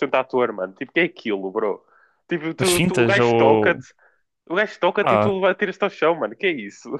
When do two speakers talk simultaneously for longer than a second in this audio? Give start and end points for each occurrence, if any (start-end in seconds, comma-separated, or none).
2.6-3.8